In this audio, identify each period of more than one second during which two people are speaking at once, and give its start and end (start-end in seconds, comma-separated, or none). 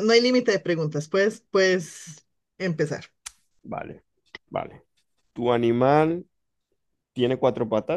none